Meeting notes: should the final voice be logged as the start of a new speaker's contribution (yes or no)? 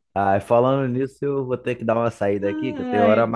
no